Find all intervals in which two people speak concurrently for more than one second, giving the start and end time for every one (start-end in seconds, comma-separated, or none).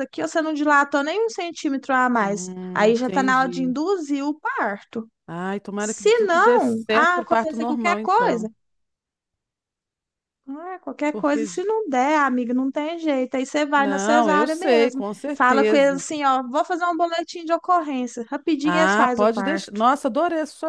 2.2-3.8, 5.8-8.5, 13.8-16.0, 18.6-19.8